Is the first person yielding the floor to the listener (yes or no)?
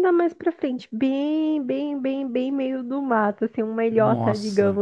no